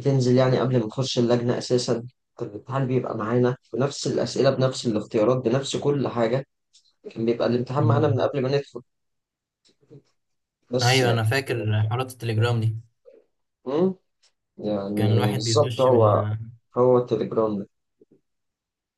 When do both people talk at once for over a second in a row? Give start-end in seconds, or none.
14.9-16.2